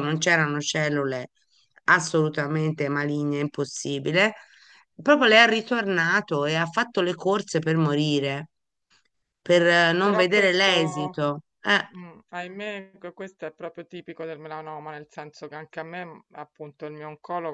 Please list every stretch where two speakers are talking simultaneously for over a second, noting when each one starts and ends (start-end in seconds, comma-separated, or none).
10.0-11.2